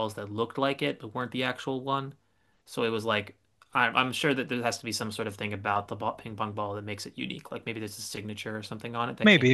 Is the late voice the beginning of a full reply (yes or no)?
yes